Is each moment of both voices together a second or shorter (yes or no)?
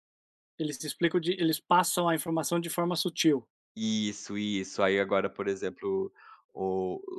yes